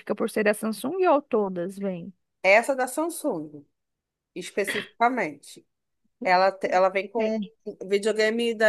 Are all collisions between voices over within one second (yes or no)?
yes